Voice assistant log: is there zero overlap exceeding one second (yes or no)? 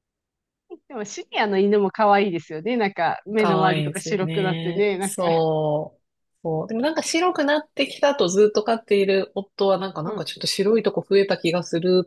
no